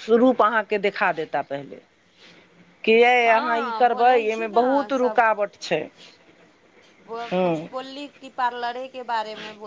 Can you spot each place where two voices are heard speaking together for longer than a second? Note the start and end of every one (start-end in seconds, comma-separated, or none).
3.3-4.9